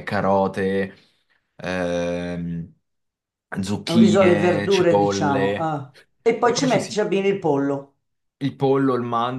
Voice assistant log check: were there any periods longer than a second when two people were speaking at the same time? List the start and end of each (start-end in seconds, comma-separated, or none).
3.9-5.8